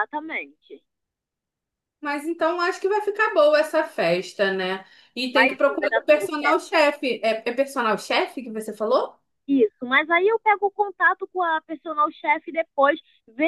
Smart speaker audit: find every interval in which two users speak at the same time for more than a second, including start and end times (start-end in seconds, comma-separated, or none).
5.3-6.6